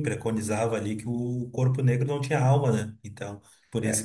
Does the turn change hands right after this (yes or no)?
yes